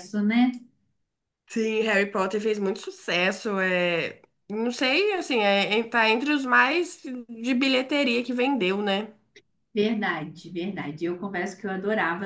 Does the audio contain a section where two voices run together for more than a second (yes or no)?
no